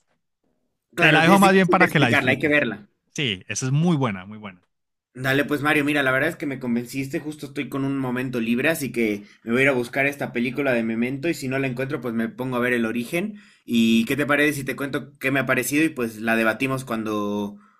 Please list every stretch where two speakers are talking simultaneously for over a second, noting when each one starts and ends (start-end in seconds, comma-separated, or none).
1.0-2.6